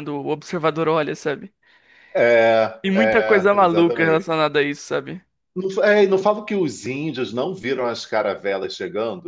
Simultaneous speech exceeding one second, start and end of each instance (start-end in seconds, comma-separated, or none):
2.8-4.3